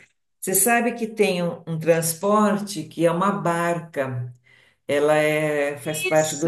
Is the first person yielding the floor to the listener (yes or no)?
no